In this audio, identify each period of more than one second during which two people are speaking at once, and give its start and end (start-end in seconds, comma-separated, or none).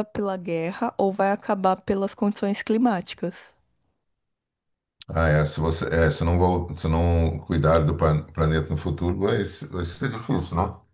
none